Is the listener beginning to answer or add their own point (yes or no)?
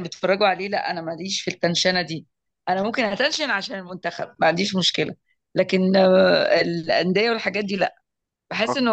no